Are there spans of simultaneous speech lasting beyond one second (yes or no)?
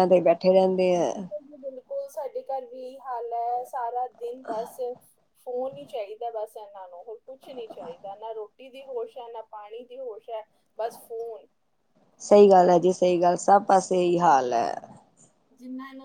no